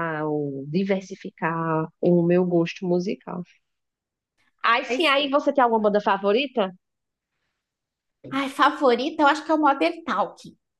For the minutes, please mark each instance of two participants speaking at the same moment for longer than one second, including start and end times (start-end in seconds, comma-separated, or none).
none